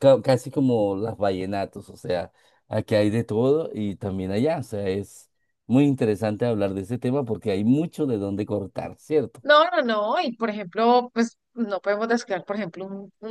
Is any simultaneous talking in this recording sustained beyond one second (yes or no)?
no